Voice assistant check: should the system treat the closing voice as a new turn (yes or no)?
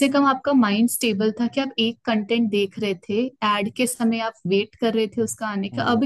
no